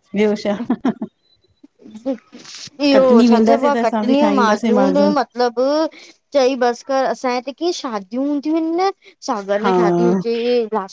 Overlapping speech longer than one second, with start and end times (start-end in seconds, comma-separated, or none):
2.9-4.7